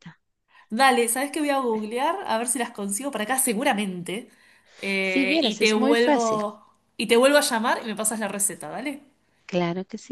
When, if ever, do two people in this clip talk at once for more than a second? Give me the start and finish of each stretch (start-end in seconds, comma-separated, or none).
5.0-6.4